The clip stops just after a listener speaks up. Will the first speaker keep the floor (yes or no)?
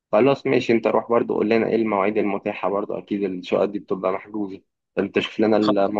yes